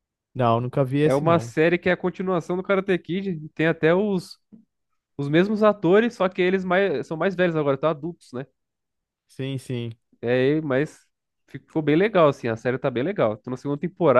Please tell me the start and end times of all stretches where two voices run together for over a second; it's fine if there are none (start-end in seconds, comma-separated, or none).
none